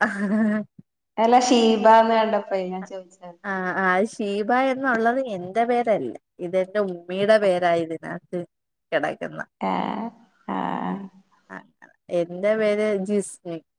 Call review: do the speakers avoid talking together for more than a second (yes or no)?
yes